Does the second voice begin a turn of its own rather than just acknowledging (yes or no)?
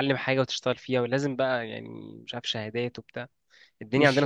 yes